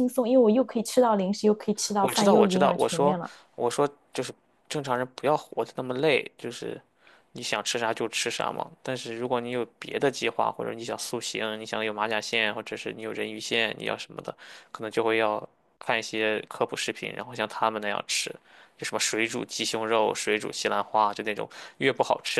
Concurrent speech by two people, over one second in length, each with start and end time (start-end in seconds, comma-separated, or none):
2.0-3.2